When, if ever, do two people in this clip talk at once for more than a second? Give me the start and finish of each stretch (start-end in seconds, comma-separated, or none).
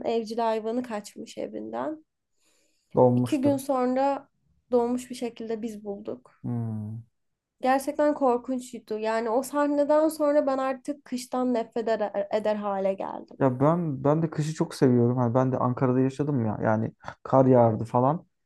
none